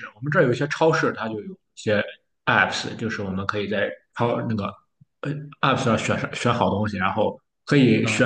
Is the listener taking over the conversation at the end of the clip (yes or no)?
no